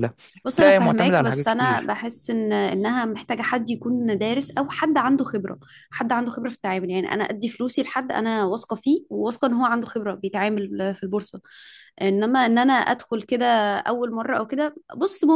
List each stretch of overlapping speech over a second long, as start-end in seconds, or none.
0.6-1.9